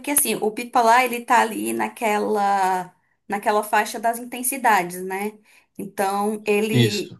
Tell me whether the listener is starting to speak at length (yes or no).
no